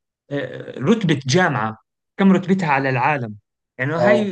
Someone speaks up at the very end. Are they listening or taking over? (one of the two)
listening